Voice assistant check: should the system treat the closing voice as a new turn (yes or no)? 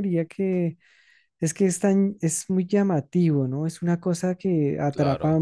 no